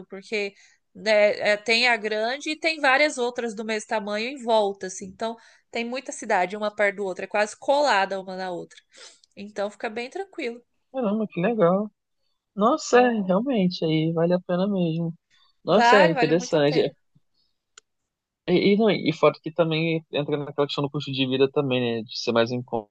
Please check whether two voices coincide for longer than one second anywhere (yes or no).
yes